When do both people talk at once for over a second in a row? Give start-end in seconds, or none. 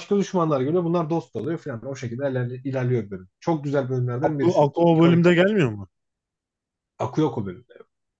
4.2-5.5